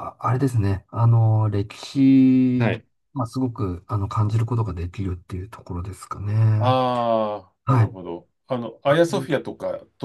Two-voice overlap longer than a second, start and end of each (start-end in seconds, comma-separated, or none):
none